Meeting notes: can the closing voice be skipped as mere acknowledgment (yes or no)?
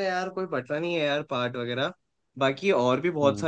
yes